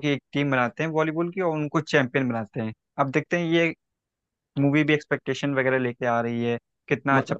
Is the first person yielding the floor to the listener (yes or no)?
no